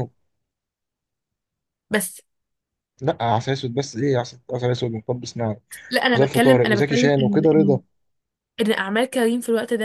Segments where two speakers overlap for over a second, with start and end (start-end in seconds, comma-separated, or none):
6.1-7.8